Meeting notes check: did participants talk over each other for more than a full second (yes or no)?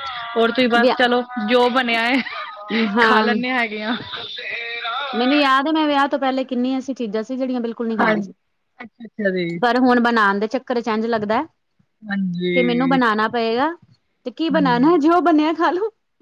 no